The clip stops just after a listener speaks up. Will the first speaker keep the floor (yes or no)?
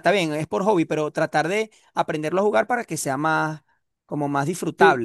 no